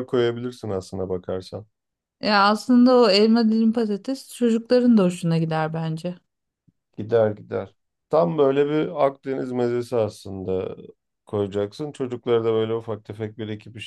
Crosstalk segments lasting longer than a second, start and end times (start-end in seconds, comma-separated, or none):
none